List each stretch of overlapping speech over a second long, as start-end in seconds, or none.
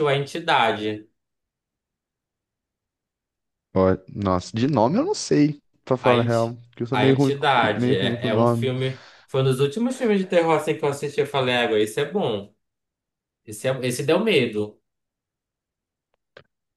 6.0-8.7